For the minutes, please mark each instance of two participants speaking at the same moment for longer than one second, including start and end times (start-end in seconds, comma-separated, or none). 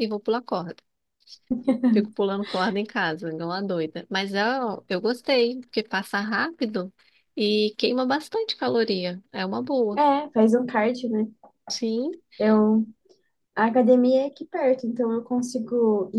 none